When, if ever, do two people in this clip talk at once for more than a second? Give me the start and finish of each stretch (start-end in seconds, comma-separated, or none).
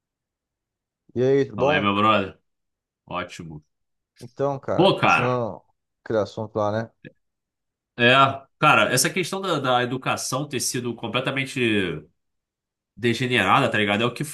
none